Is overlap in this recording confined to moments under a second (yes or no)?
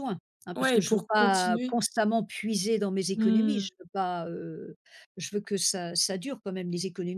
no